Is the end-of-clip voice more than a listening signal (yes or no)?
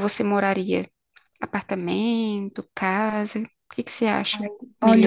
yes